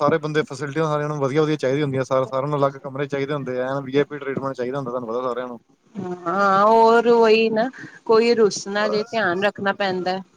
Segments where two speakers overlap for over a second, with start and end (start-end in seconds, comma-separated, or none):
none